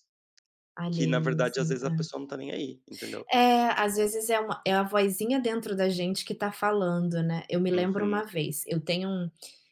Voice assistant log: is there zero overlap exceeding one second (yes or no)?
no